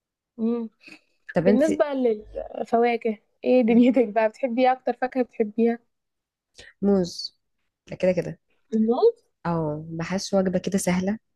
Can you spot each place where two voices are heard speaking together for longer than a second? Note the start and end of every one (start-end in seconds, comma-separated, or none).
none